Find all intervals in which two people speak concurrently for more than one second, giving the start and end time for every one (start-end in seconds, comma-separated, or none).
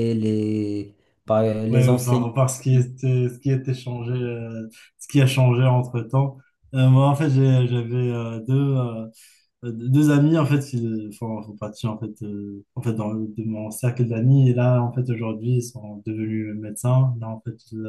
1.7-2.9